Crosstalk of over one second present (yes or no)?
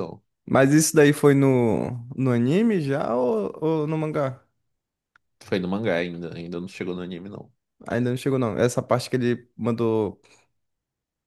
no